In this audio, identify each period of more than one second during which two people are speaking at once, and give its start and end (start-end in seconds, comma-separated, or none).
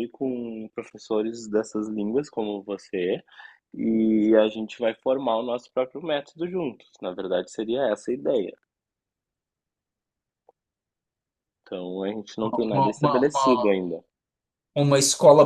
12.5-13.8